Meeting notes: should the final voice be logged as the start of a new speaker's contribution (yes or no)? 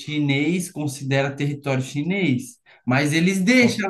no